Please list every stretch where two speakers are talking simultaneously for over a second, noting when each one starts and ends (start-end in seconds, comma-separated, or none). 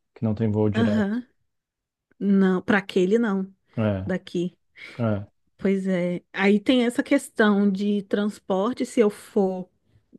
none